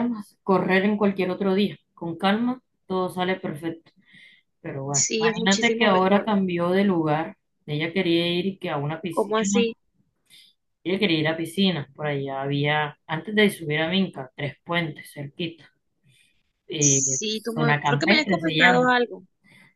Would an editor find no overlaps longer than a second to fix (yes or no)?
no